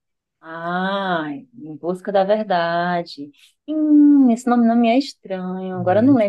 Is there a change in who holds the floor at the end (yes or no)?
no